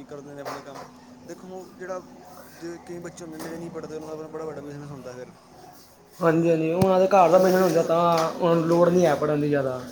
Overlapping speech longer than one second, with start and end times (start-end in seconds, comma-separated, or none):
none